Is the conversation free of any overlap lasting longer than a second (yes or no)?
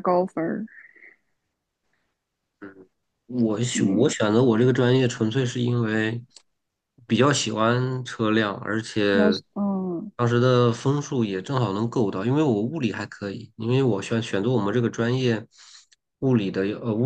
yes